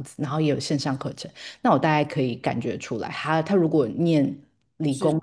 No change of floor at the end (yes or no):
yes